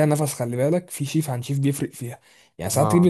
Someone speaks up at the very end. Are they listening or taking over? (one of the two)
listening